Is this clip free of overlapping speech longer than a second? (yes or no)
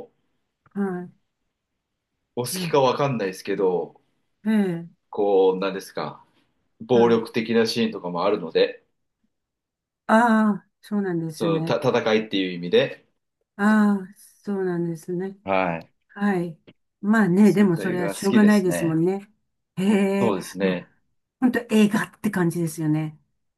no